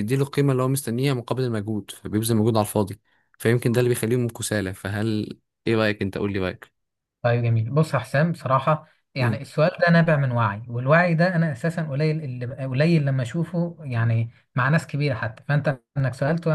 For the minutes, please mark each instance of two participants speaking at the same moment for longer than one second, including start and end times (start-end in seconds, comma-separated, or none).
none